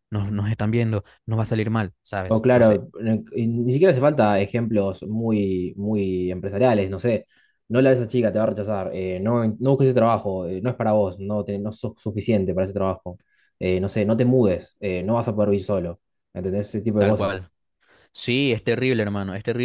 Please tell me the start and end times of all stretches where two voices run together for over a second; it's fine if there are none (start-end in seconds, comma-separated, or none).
none